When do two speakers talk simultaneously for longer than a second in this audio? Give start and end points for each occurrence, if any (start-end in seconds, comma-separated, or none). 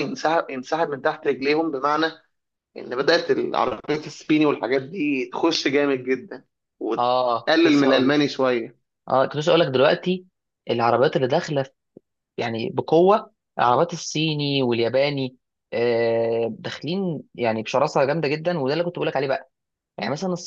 7.0-8.2